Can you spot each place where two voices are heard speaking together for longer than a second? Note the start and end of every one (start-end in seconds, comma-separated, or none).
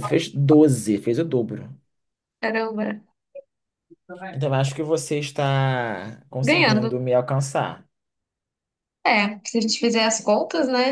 none